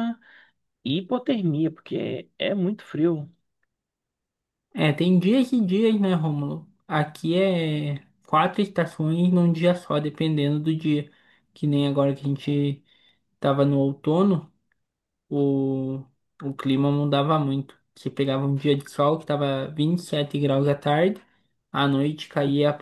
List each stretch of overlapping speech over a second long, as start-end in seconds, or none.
none